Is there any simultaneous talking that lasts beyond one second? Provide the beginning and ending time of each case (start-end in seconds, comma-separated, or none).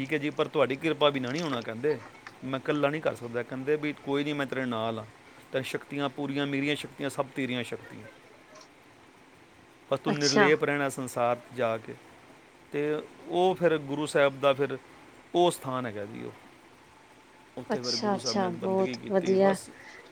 17.7-19.6